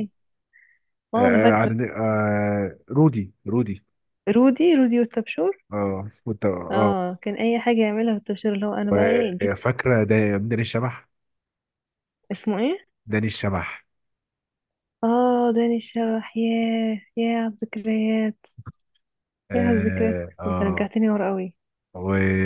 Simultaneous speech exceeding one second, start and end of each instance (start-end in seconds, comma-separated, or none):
19.5-20.9